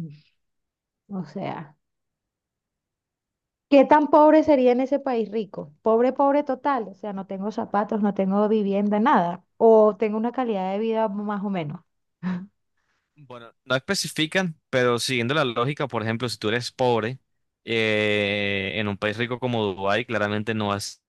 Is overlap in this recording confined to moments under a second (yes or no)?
yes